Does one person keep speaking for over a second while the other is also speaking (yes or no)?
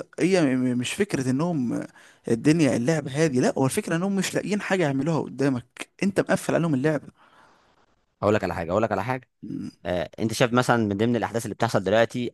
no